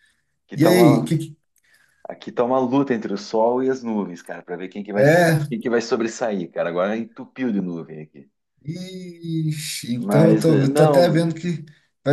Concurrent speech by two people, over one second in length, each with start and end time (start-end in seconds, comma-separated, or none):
10.0-11.3